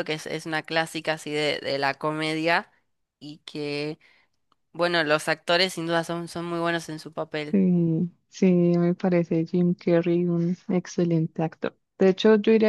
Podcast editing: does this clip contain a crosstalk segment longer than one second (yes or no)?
no